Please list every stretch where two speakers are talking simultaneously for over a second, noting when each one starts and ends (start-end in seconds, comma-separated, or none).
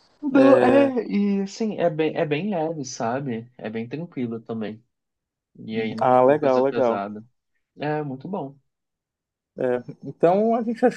5.7-7.1